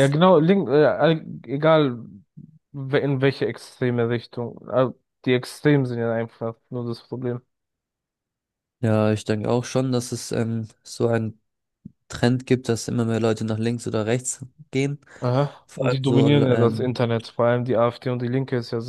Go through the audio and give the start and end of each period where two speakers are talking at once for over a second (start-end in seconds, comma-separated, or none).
15.7-16.9